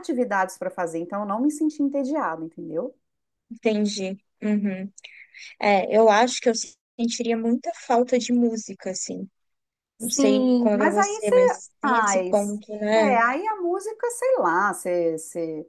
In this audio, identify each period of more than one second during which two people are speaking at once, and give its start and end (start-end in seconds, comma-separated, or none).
10.0-12.3